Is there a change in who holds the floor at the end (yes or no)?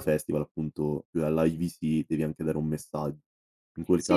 yes